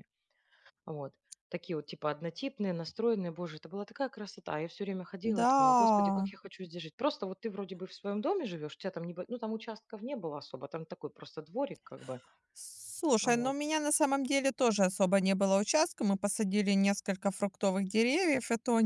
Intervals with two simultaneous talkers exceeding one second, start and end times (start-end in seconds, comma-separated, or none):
none